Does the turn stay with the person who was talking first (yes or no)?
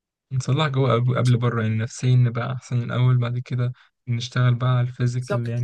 yes